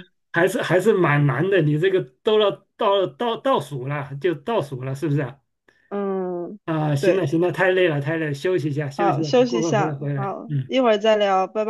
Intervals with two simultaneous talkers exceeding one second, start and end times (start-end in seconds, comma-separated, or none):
9.0-10.7